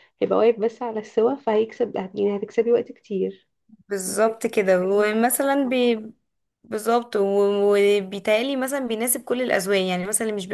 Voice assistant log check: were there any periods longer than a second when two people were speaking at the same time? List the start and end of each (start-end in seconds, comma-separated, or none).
4.0-5.8